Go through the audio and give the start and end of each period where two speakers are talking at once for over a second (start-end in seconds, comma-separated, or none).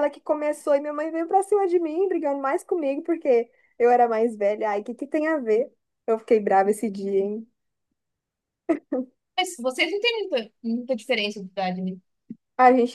none